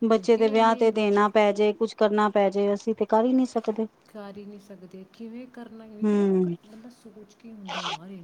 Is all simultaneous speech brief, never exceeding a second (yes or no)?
yes